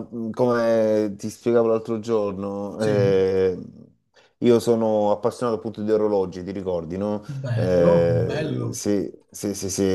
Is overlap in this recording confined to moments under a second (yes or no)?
no